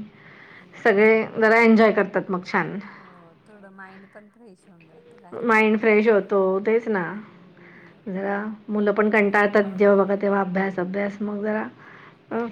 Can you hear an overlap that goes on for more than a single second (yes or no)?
no